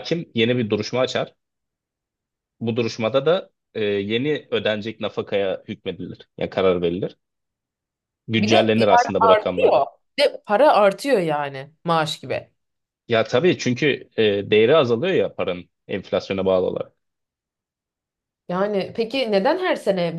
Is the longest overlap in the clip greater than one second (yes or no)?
yes